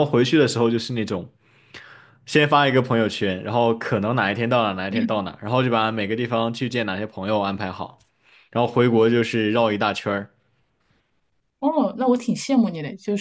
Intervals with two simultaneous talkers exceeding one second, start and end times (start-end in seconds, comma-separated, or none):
none